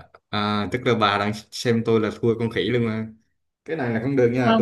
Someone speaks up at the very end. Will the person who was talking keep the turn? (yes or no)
yes